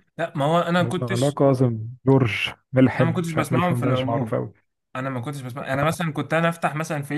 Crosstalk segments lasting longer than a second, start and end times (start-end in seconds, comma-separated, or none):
3.0-4.4